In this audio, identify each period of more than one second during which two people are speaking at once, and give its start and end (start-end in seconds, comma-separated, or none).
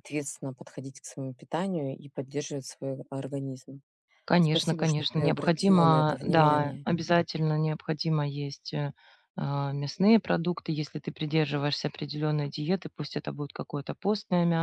4.4-6.9